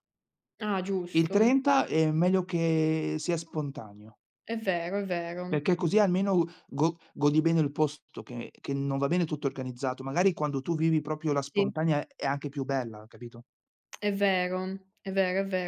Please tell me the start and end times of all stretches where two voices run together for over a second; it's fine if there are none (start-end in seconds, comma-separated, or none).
none